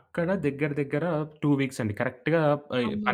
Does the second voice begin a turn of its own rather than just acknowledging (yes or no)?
no